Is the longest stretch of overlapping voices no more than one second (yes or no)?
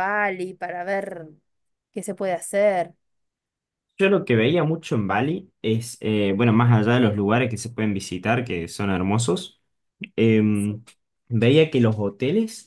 yes